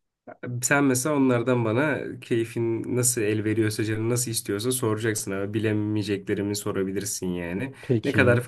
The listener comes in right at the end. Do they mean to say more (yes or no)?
no